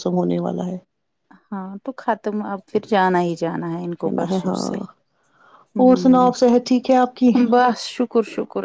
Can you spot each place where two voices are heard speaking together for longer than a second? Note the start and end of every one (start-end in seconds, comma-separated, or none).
none